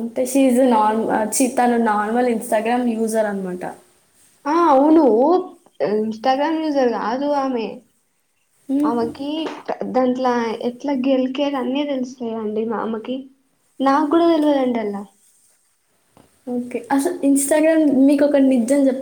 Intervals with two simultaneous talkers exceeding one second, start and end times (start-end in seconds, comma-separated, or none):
none